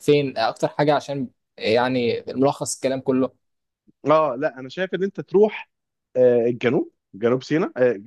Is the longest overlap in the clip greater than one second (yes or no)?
no